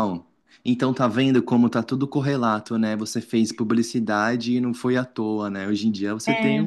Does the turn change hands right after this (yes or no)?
no